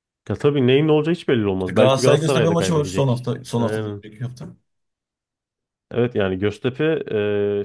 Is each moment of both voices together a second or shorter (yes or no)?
no